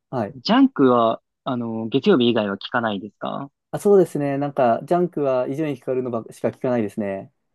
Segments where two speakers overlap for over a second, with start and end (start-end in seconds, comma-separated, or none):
none